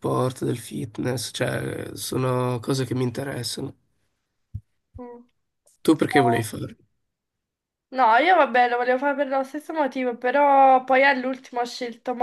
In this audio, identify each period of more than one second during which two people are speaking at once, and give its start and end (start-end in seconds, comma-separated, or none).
none